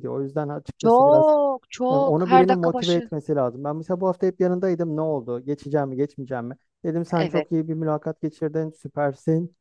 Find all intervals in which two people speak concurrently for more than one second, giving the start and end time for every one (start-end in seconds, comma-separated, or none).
1.9-3.1